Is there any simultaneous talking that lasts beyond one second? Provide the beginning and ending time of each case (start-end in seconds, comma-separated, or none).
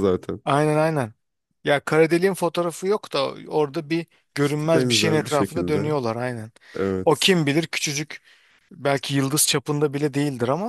4.4-5.9